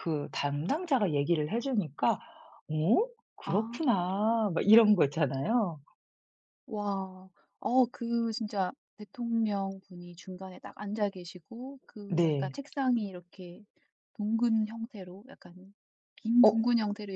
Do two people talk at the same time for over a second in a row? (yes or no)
no